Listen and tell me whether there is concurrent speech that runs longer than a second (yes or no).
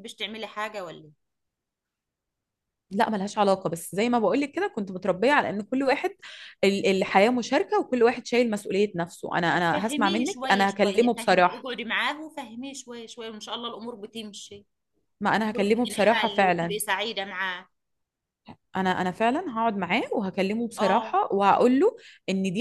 yes